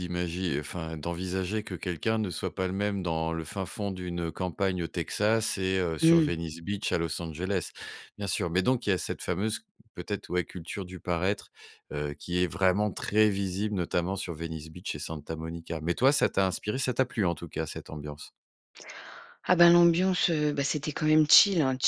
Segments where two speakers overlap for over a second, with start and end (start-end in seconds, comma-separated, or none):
none